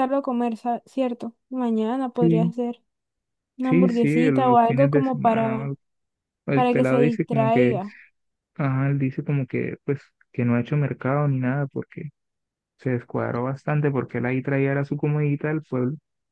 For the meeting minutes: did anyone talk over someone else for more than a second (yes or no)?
yes